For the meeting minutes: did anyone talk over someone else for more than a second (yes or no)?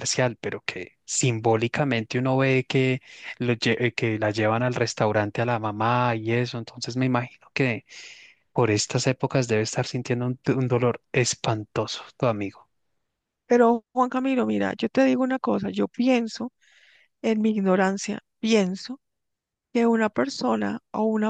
no